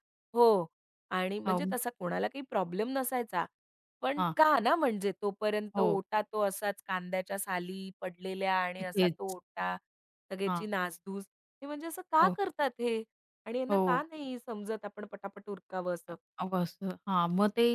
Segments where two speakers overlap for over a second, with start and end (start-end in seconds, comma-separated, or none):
none